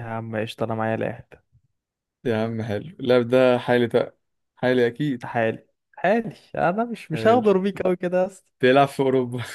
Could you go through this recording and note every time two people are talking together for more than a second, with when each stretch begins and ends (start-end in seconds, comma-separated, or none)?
none